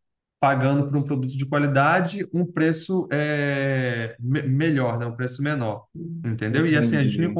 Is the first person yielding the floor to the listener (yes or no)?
no